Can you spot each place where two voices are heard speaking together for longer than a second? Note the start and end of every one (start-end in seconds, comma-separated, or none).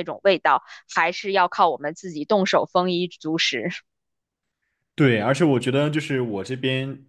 none